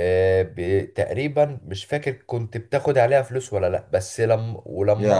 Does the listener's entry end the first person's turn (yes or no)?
no